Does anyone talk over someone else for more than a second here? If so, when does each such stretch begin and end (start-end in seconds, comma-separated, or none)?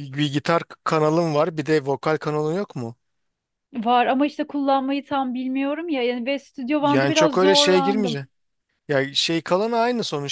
6.8-8.2